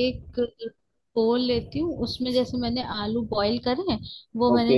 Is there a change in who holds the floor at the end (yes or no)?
no